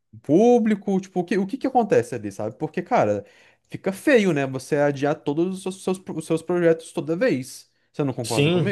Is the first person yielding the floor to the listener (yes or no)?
yes